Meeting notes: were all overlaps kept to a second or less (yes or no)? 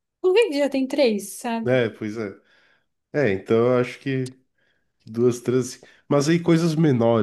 yes